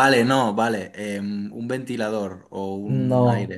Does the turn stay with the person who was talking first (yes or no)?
no